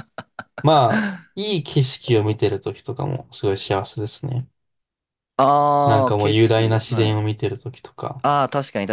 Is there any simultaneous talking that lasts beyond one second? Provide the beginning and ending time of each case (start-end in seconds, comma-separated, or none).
5.9-7.2